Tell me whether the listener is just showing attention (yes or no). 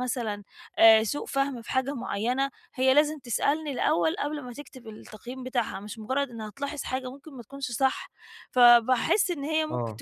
yes